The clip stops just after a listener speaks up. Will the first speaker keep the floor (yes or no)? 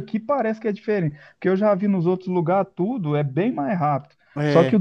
yes